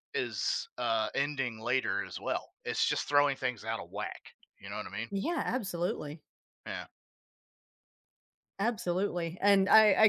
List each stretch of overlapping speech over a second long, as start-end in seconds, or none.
none